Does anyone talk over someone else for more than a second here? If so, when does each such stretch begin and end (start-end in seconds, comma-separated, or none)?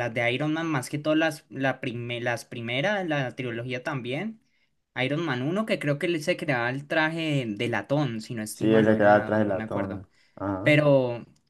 8.5-10.0